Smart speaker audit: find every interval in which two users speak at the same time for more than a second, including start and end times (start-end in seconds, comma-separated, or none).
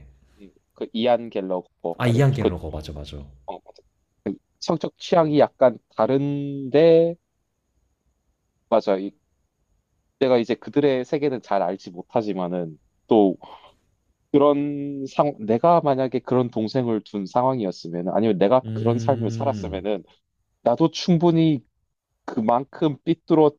18.6-19.8